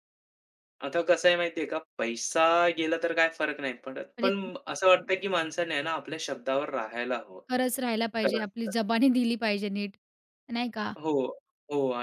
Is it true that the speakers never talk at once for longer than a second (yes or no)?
yes